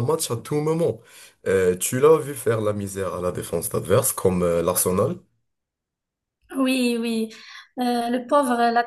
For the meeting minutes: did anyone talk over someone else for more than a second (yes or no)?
no